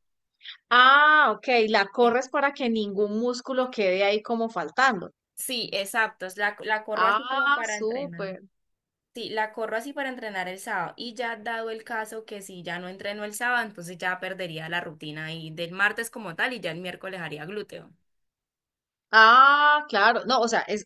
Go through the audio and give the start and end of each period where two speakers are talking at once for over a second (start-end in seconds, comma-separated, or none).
6.9-8.4